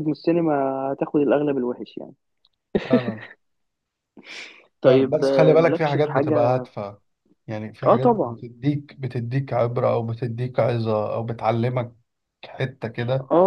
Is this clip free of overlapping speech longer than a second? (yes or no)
no